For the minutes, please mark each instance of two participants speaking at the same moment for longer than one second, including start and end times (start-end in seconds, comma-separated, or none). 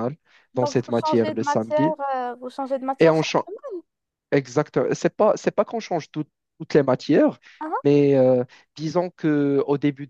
0.6-2.0